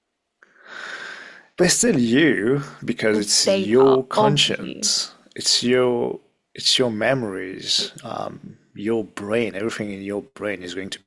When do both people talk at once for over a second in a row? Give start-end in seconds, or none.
3.1-4.9